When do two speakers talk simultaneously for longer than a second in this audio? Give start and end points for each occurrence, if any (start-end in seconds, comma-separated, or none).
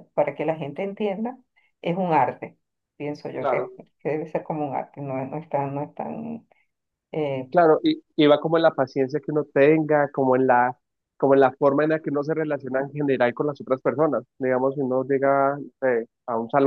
none